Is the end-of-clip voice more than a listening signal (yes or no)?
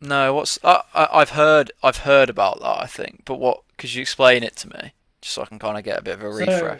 yes